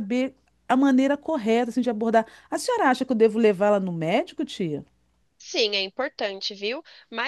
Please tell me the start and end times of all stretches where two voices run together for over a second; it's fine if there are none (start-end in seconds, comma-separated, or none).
none